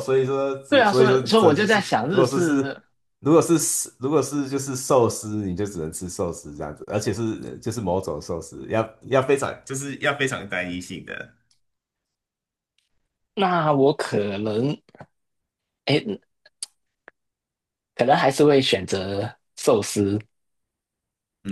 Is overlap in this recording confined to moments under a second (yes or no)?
no